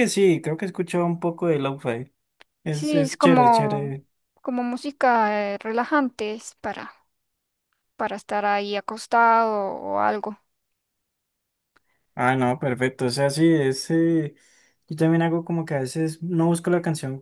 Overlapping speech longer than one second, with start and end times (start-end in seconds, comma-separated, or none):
2.7-3.9